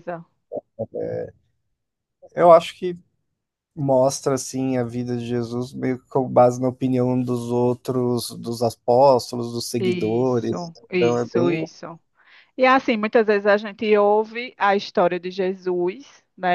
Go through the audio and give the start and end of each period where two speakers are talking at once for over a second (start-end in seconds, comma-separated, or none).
9.8-11.7